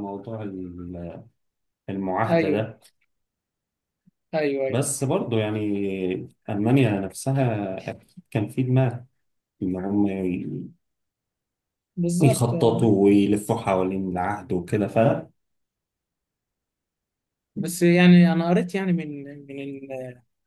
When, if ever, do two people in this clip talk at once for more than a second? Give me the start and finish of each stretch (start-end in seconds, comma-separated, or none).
none